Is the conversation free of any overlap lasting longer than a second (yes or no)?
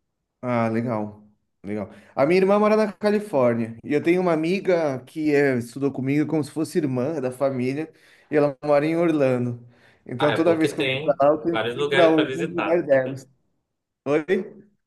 no